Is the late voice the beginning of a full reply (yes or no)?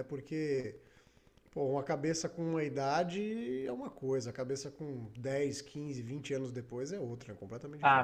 yes